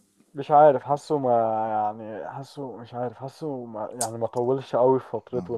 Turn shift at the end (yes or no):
yes